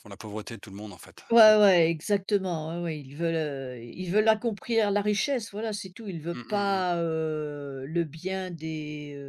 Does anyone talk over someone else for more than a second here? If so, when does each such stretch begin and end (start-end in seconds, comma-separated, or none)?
none